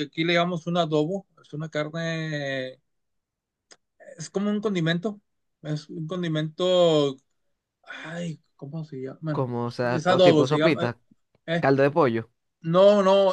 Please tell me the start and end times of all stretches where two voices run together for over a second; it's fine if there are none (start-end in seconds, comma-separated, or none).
9.4-10.9